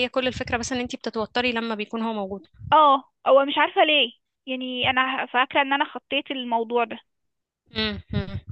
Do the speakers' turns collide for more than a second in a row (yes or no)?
no